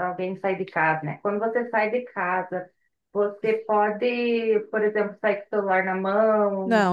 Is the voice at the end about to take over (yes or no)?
yes